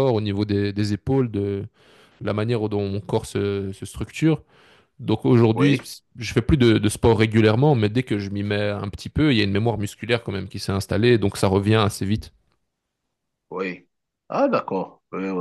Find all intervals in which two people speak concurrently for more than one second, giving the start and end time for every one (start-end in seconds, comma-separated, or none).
none